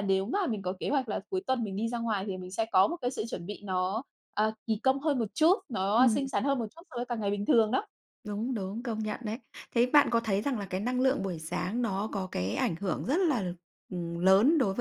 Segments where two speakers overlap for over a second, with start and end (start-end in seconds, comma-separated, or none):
none